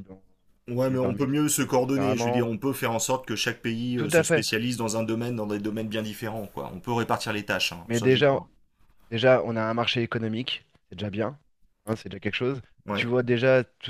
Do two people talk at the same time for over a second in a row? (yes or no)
yes